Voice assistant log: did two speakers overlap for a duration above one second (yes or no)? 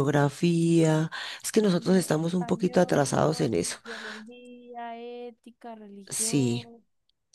yes